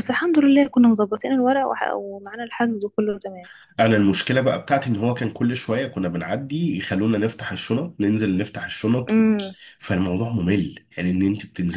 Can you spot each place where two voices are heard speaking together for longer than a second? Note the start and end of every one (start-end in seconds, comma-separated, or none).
none